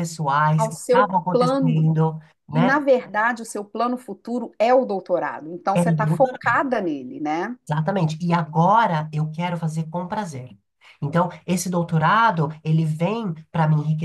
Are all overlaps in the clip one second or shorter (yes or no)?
no